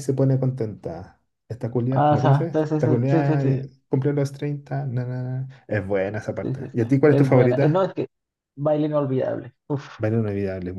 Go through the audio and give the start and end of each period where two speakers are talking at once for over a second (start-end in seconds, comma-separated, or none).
1.9-3.6, 6.4-7.9